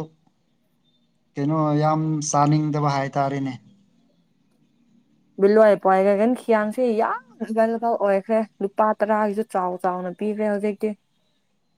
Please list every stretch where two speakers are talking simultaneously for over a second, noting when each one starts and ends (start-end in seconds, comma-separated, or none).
none